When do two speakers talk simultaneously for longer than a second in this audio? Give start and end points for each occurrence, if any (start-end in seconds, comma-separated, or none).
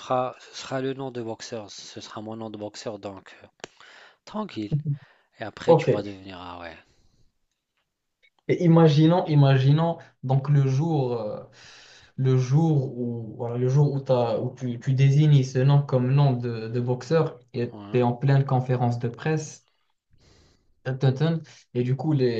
none